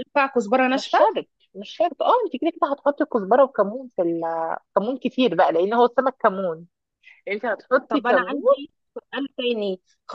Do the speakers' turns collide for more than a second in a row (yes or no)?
no